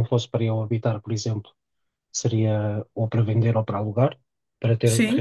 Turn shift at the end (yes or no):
yes